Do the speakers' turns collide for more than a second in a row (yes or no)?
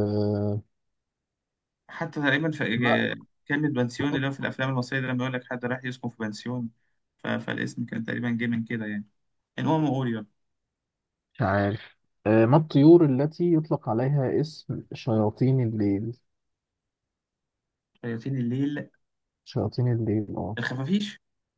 no